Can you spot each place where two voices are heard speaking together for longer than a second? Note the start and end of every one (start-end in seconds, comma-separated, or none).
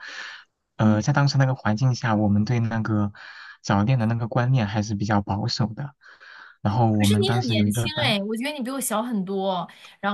6.9-8.2